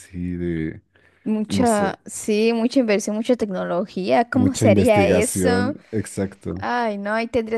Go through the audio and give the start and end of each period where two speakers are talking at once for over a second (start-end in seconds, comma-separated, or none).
4.3-5.8